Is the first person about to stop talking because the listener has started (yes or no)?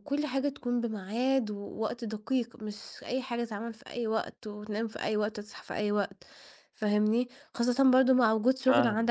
no